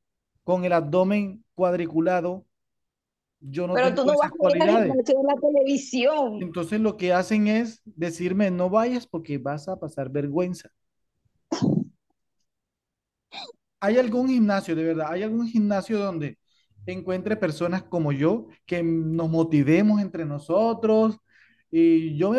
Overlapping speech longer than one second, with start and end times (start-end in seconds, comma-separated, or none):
3.7-5.0